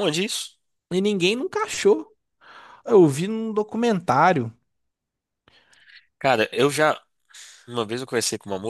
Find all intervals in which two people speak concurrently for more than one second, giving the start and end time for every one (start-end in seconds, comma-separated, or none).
none